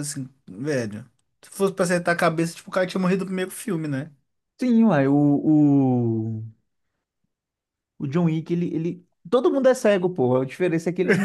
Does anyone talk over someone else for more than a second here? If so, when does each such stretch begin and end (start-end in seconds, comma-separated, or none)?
none